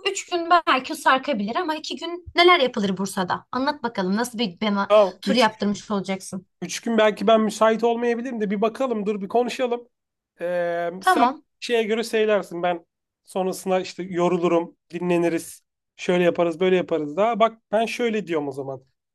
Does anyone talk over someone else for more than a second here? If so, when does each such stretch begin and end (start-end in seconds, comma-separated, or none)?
none